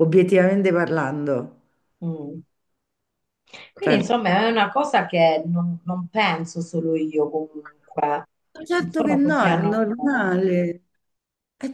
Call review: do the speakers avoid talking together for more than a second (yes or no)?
no